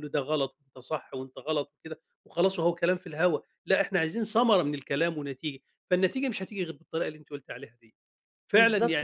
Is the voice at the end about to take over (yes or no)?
yes